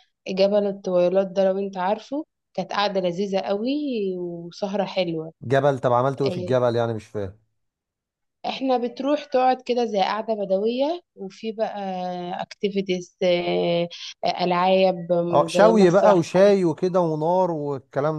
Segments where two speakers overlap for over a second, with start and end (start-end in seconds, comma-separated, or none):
15.3-16.5